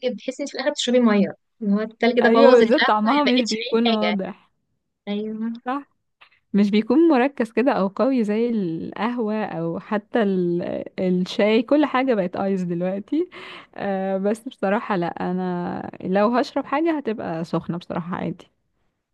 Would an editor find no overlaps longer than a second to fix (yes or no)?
no